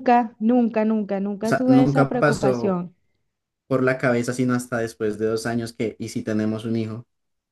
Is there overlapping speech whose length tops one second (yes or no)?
yes